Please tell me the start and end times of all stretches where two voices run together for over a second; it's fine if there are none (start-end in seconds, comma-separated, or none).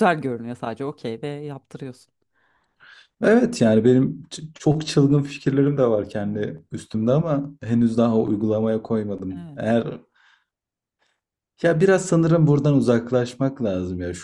none